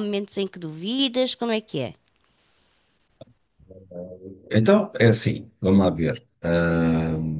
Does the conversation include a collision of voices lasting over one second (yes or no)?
no